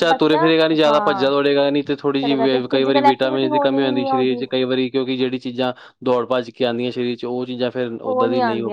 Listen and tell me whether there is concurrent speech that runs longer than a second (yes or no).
yes